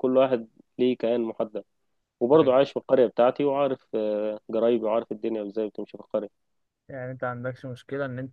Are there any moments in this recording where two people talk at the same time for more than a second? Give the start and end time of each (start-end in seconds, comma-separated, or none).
none